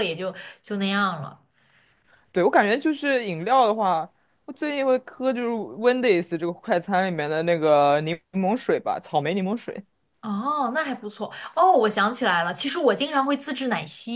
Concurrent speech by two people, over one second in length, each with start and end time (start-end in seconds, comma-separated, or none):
none